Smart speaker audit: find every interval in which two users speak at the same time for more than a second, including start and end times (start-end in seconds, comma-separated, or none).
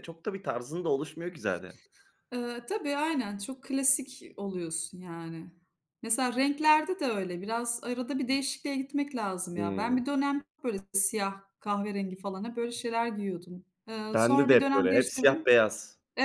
14.1-15.5